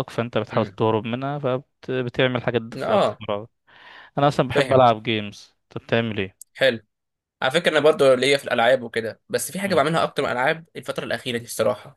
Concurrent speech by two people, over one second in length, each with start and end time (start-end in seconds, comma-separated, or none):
none